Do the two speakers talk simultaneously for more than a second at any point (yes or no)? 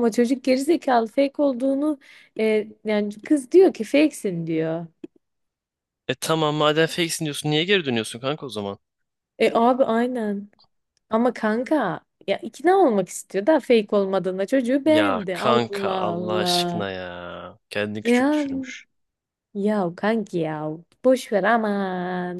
yes